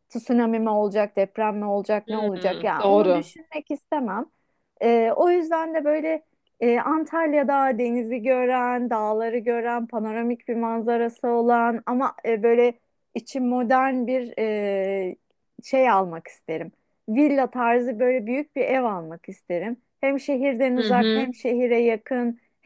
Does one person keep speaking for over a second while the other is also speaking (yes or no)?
yes